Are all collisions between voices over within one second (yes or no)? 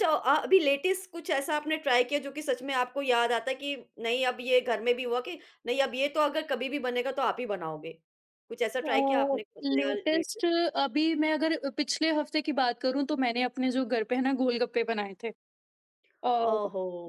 no